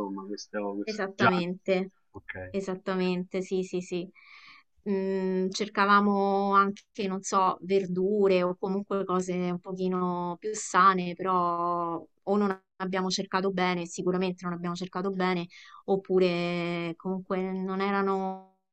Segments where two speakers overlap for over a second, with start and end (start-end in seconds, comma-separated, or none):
none